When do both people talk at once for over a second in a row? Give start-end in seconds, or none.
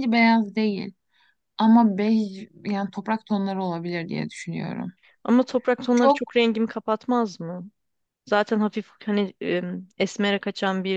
none